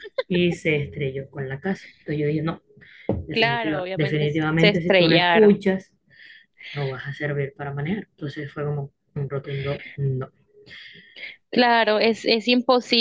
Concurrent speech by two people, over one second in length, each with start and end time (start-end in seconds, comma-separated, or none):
3.3-5.6